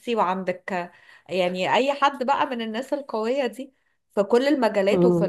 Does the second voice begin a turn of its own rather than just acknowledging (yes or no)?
no